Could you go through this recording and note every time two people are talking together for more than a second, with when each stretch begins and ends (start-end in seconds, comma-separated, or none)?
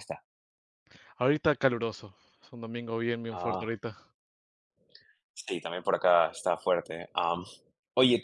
none